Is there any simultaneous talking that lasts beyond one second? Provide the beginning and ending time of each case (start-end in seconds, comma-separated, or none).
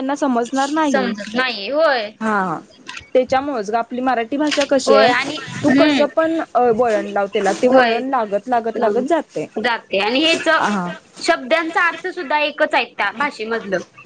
none